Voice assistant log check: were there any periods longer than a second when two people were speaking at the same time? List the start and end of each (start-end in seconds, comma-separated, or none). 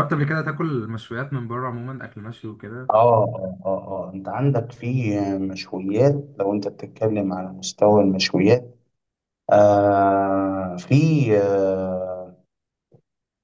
none